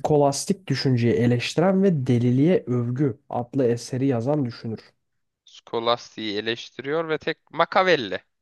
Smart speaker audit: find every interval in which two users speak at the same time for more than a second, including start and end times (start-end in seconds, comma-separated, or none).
none